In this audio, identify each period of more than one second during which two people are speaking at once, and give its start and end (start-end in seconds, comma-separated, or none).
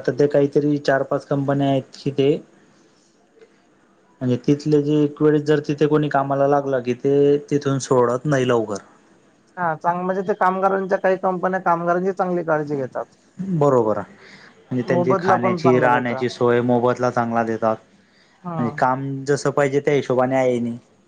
14.9-16.2